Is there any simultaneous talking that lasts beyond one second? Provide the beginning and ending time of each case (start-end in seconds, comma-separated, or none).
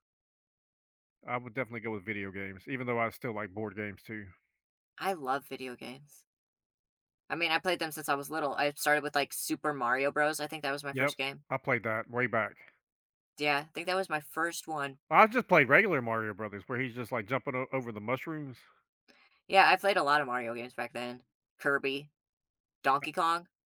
none